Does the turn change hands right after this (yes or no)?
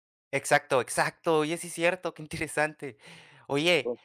no